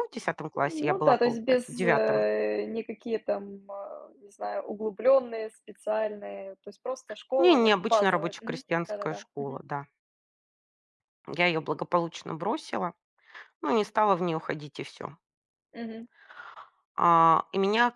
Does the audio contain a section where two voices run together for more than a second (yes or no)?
yes